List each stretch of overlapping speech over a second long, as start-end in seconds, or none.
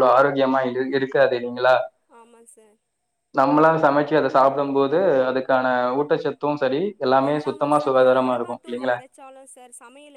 7.3-9.0